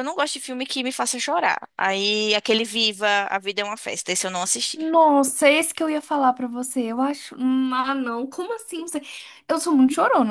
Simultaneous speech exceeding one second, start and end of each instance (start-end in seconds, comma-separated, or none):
none